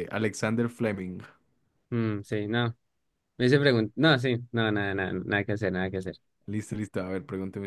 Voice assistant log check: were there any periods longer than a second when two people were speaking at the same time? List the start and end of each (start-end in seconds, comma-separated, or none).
none